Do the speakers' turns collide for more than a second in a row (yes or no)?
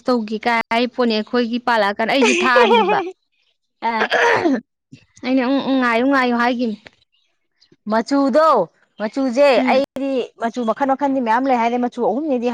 no